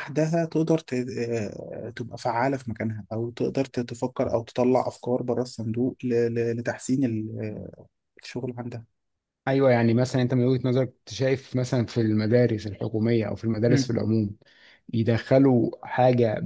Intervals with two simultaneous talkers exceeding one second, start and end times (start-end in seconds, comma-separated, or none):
none